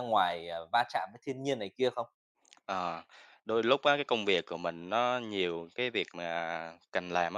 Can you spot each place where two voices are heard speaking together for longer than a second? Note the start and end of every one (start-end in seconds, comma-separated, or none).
none